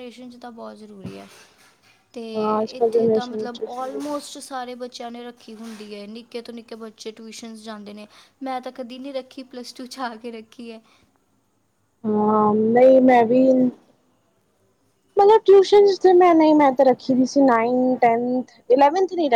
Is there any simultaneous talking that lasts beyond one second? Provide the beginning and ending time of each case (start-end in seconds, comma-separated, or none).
2.8-4.0